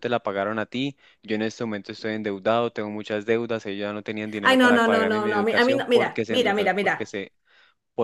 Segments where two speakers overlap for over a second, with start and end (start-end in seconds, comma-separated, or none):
4.4-7.1